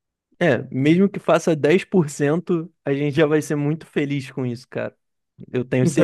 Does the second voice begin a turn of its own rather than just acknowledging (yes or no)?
yes